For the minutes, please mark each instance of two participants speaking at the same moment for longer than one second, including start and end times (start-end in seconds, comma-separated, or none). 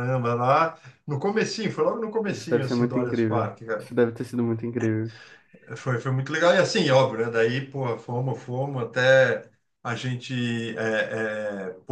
2.3-3.9